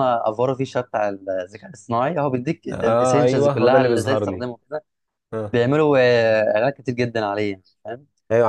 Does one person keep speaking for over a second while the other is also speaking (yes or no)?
yes